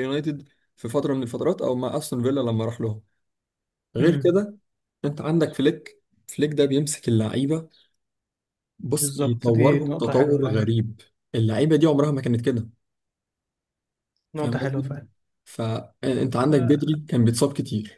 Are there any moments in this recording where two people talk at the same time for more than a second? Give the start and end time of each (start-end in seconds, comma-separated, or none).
9.0-10.7